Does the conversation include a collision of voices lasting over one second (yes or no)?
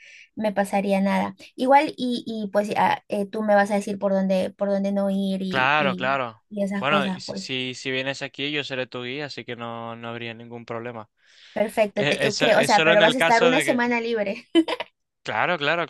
yes